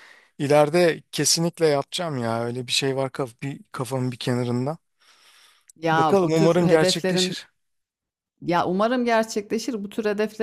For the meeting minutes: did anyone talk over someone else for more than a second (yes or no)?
yes